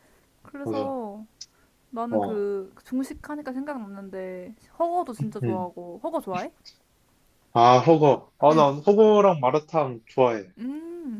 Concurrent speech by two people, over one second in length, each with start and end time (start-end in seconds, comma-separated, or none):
none